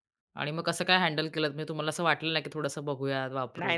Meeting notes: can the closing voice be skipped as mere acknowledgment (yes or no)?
no